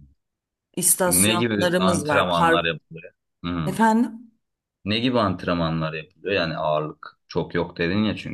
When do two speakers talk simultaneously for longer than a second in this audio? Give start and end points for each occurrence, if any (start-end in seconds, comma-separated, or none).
1.1-2.8